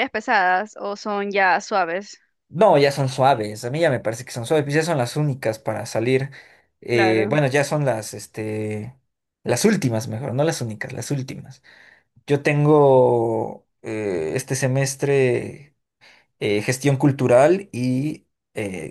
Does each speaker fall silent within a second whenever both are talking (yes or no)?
yes